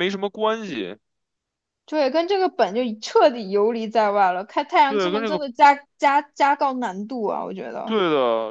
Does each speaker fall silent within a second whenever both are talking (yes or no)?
yes